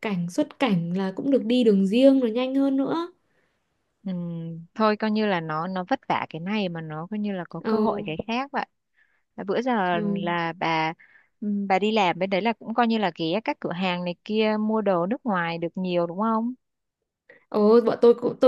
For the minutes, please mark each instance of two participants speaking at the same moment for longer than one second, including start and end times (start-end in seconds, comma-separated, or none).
none